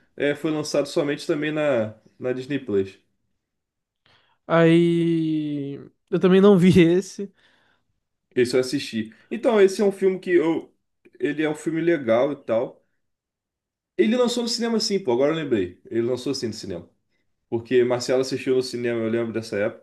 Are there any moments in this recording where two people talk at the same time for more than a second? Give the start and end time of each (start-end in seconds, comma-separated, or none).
none